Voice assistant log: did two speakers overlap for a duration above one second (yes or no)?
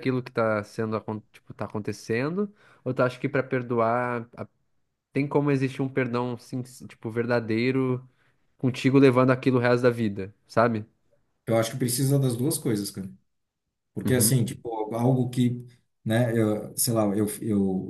no